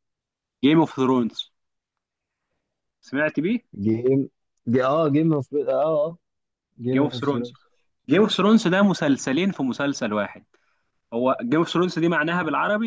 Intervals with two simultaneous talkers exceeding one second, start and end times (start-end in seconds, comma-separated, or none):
none